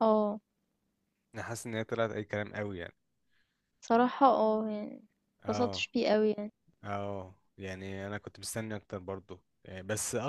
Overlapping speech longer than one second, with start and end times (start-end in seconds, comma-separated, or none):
none